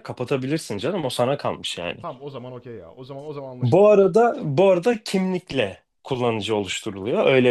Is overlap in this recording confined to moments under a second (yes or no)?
yes